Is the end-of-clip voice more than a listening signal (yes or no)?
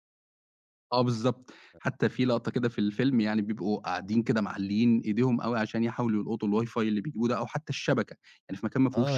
yes